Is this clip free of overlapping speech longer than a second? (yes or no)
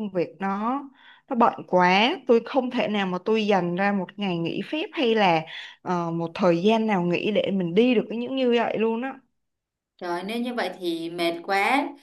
yes